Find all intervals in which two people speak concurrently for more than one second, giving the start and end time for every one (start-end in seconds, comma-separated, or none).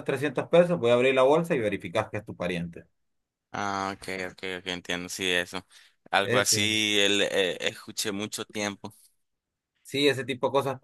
none